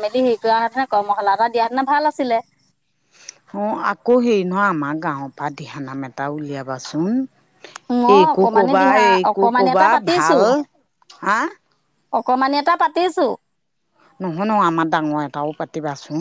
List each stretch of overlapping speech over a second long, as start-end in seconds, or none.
8.2-10.4